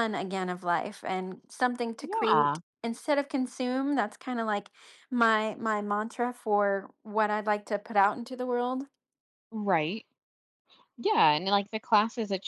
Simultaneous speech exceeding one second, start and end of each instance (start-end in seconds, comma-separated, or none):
none